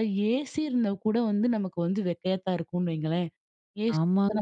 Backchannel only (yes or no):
yes